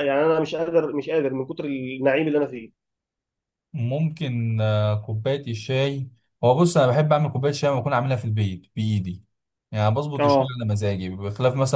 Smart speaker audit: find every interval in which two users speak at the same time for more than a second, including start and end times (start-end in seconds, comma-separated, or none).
none